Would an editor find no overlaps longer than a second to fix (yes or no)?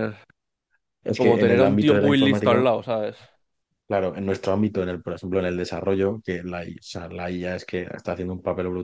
no